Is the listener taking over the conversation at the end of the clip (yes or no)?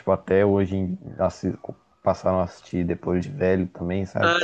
yes